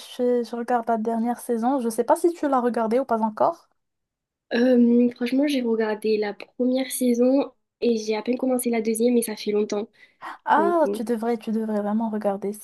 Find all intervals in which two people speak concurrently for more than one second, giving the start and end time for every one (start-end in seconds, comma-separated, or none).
none